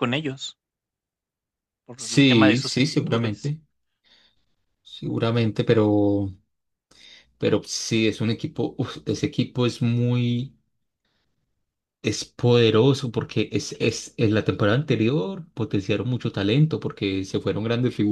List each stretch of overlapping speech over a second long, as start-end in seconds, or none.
2.0-3.5